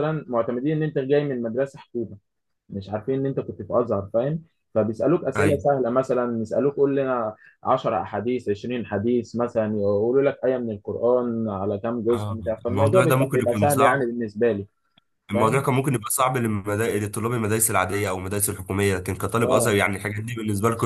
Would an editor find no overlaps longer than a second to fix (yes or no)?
no